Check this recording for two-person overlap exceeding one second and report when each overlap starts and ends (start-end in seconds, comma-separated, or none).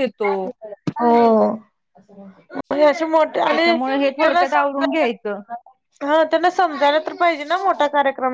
3.5-5.1